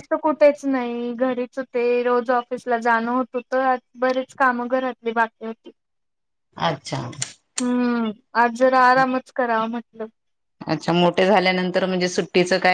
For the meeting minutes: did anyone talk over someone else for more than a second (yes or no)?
no